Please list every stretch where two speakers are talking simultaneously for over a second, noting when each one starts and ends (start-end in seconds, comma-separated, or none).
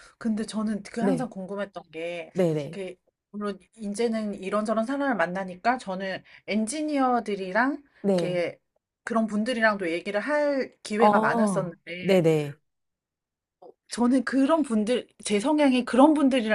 11.0-12.2